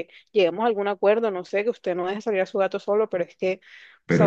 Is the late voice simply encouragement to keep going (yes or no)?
no